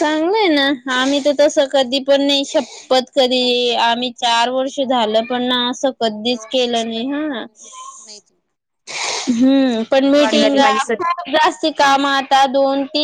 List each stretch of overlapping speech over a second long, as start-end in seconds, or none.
none